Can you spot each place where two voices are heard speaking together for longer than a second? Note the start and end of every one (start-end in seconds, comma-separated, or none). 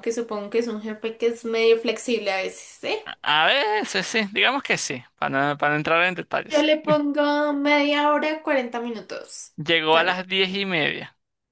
none